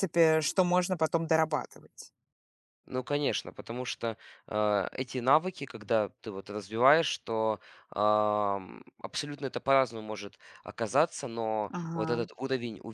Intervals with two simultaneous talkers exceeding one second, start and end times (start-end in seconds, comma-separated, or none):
none